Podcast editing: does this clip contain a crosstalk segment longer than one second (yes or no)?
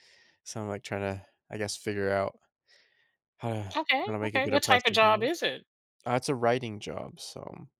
yes